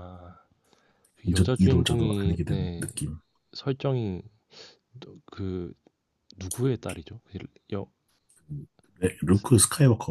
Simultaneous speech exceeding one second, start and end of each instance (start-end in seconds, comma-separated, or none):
1.3-2.9